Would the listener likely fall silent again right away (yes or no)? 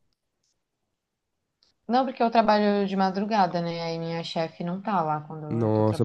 no